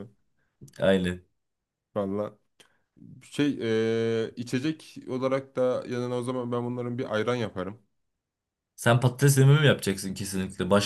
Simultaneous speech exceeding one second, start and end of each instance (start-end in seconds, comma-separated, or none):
none